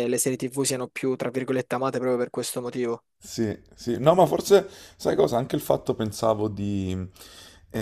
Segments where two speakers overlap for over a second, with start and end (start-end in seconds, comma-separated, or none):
none